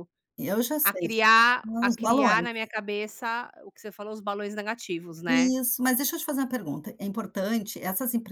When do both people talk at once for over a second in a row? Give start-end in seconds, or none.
0.8-2.5